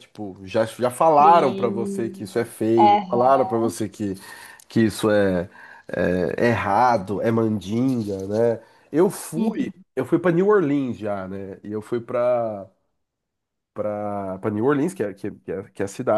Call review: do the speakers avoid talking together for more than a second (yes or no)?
no